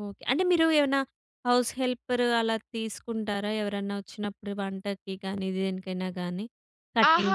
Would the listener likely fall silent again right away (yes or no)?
no